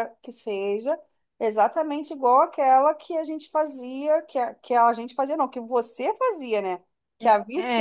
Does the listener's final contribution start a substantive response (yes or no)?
no